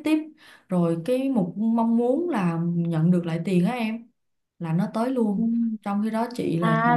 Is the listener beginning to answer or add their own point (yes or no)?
yes